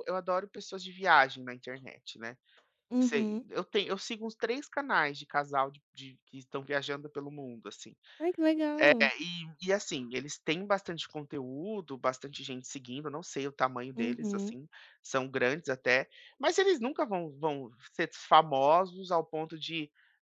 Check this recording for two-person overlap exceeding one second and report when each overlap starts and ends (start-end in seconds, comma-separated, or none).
none